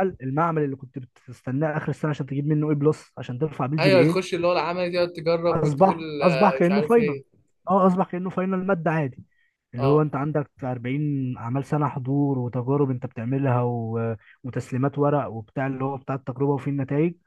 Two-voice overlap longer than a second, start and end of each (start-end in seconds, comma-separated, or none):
5.5-7.2